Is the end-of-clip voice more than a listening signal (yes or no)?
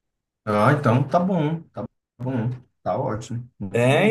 yes